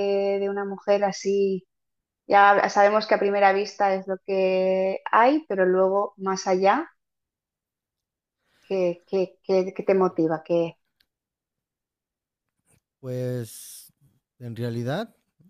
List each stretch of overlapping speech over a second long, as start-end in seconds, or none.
none